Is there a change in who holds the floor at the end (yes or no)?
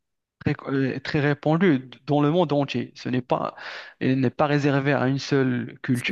no